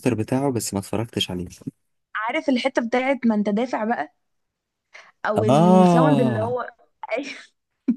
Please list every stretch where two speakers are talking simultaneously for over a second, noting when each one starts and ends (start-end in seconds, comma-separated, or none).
5.3-6.6